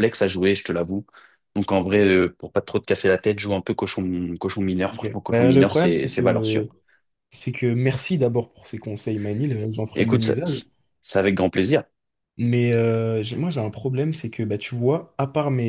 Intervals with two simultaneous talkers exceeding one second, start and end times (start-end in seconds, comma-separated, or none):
4.9-6.6